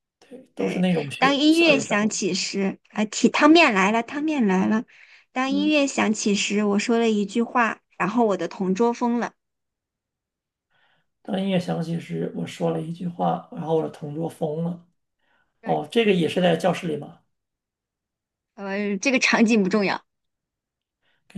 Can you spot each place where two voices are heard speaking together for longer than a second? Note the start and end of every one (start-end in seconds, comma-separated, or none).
0.6-2.1